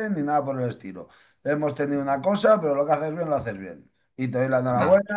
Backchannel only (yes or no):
yes